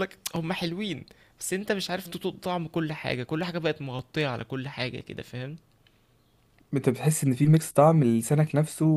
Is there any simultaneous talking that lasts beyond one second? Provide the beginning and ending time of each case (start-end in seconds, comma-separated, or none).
none